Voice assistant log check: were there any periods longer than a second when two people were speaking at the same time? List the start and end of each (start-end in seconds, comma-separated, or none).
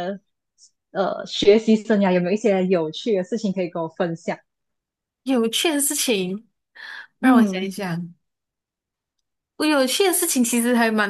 none